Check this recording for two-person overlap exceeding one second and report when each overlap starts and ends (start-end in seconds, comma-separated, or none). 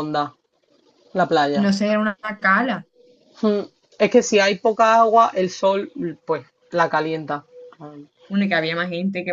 none